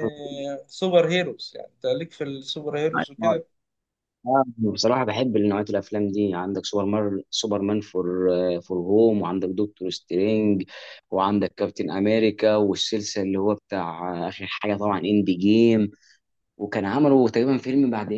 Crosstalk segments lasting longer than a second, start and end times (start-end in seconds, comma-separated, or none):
none